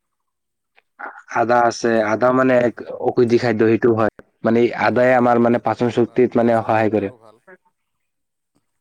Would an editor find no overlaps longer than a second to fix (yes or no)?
no